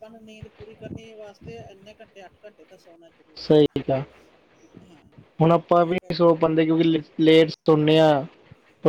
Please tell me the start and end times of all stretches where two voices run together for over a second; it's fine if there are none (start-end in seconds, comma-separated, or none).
none